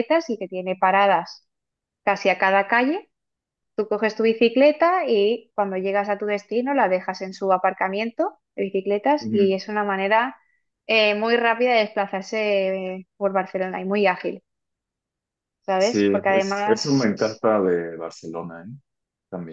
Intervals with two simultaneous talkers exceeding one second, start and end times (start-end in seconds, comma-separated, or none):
15.8-17.1